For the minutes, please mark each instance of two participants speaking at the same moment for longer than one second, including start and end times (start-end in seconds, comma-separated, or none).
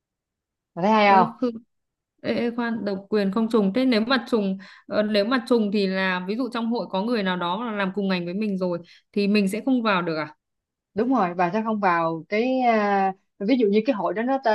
none